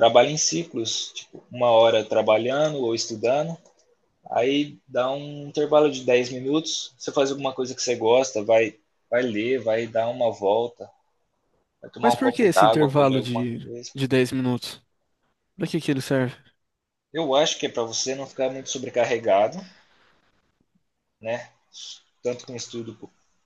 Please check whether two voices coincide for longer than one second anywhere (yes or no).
yes